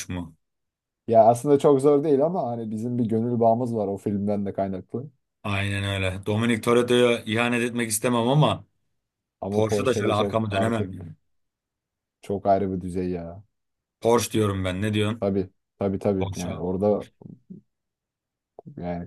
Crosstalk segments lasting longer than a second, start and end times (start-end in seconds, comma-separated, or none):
9.5-11.0